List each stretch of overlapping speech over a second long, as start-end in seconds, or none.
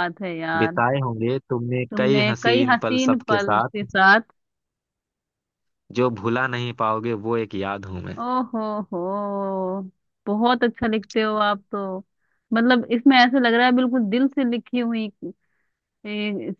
1.9-3.8